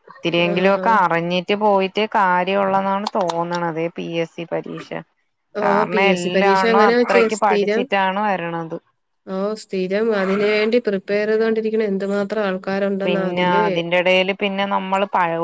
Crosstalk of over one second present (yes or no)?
yes